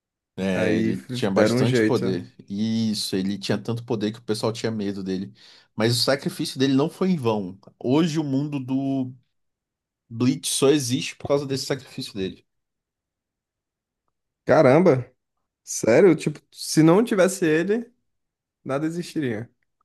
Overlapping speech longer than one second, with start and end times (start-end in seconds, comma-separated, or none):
0.5-2.2